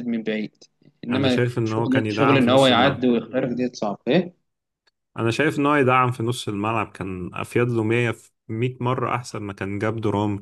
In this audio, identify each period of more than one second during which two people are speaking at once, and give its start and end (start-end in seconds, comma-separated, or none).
1.1-3.0